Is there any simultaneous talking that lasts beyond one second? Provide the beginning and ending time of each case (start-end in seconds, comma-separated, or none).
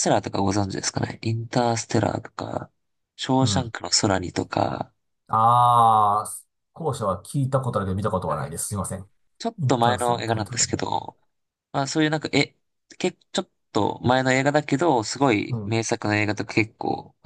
9.6-11.0